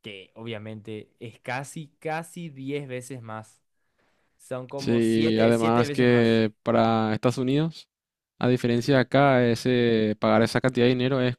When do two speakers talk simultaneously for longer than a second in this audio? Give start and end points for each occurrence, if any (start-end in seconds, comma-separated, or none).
4.8-6.4